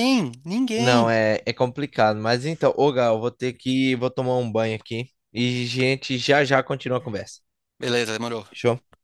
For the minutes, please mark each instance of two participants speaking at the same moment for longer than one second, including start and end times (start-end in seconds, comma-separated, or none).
none